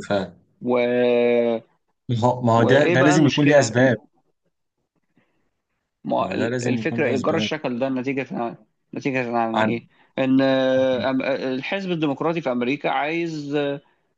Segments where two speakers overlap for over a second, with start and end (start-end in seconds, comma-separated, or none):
2.6-3.9, 6.2-7.5